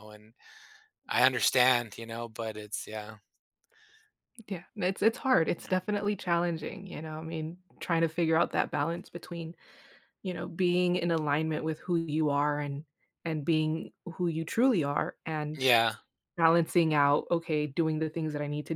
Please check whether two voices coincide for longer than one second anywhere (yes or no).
no